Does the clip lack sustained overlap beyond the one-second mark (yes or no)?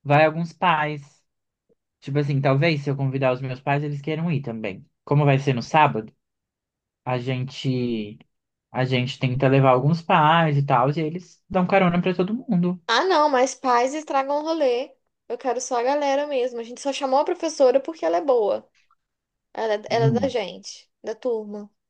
yes